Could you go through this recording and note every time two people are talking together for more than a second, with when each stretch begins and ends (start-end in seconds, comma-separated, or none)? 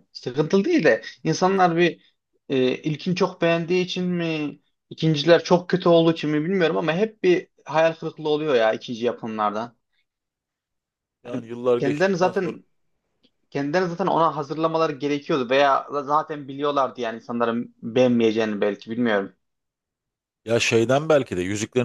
11.2-12.6